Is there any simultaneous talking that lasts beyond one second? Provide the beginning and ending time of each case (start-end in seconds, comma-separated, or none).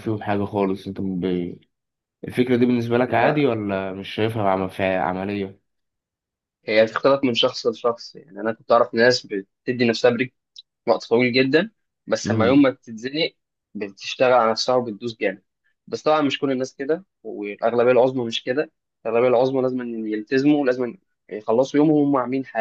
none